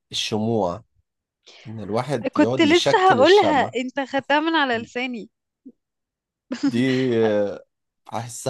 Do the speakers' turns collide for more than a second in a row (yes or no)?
yes